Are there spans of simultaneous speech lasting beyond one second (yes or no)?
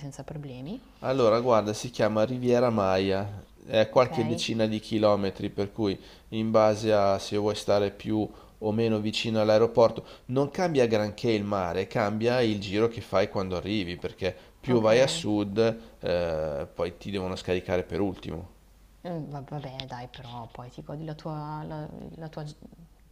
no